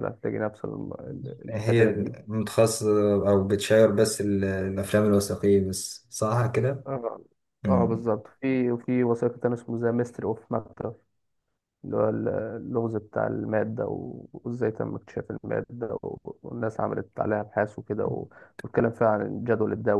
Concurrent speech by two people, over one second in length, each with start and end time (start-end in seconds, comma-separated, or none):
none